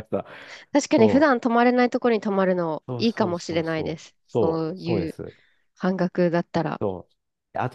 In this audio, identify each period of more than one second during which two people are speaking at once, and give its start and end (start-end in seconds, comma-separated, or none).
2.9-5.1